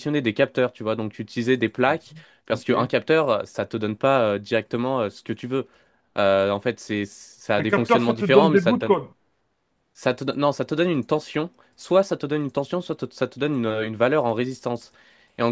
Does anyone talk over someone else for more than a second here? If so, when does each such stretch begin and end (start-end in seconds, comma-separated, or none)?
7.6-9.0